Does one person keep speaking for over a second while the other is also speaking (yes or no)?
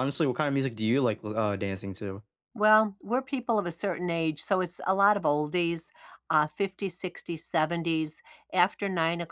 no